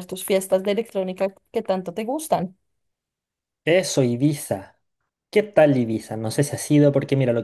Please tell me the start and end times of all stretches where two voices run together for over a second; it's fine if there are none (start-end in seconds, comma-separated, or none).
none